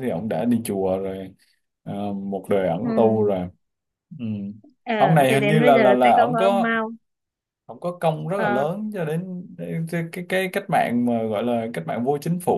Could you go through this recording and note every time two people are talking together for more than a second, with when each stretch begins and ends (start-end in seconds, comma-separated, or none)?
5.3-6.8